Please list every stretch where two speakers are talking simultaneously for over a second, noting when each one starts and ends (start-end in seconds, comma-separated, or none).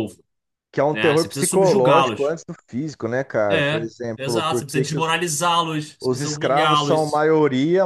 0.9-2.4, 3.5-5.2, 6.0-7.3